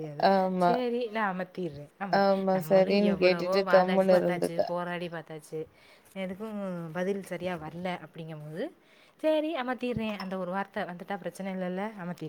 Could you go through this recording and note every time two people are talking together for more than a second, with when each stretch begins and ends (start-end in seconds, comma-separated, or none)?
2.2-4.6